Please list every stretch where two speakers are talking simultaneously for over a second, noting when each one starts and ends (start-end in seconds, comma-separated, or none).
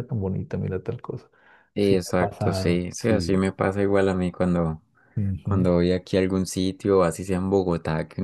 1.8-3.4